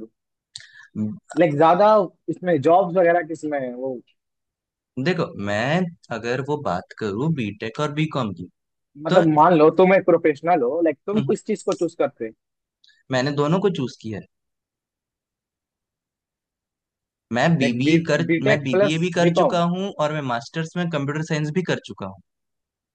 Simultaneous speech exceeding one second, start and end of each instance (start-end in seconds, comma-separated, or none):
17.6-19.6